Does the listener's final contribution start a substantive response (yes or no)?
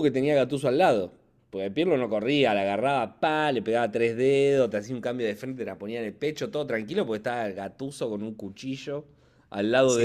yes